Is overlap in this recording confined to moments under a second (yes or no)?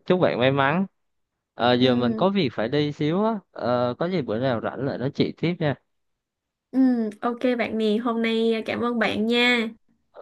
yes